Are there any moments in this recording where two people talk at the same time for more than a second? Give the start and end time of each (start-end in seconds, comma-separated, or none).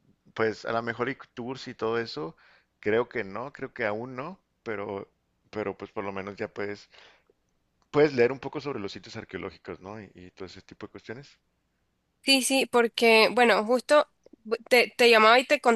none